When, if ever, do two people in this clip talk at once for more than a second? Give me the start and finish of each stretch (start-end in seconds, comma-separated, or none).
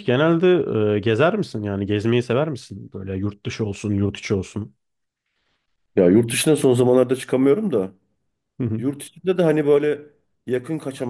none